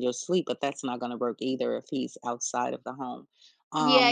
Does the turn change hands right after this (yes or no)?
yes